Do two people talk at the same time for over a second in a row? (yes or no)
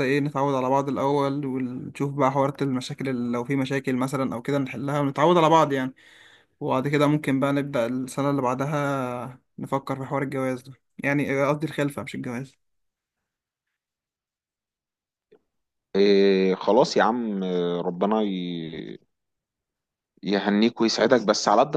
no